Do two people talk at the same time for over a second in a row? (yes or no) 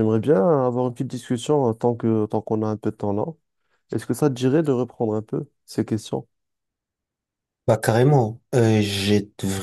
no